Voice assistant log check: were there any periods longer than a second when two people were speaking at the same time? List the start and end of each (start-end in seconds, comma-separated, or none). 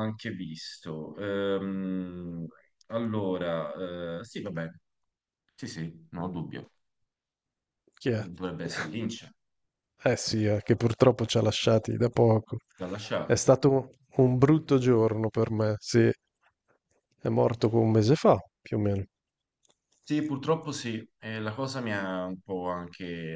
none